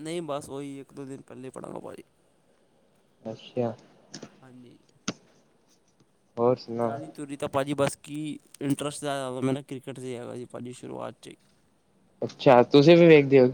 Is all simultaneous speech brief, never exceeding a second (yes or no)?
yes